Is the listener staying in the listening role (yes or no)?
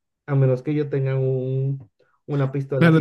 no